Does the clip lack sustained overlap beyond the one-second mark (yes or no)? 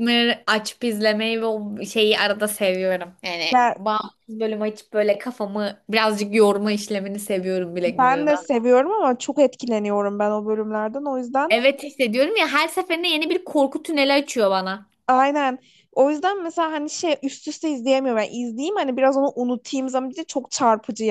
yes